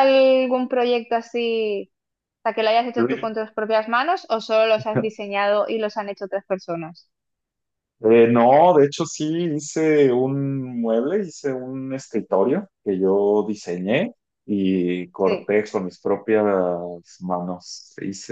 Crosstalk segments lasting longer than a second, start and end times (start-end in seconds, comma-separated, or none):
none